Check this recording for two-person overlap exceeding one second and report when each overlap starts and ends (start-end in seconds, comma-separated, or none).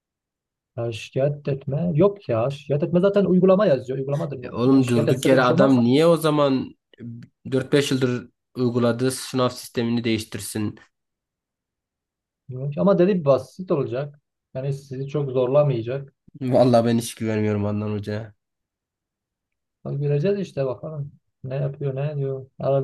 4.4-6.0